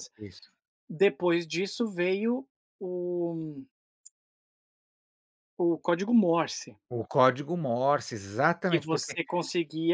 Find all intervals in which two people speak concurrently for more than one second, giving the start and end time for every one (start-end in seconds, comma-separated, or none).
none